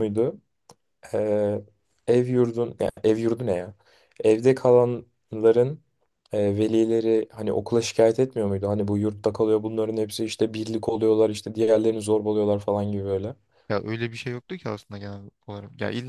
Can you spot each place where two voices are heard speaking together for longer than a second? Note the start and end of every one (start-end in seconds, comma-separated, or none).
none